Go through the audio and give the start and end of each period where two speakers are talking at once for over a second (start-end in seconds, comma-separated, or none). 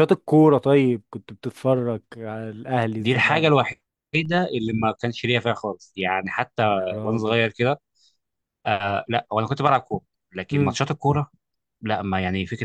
none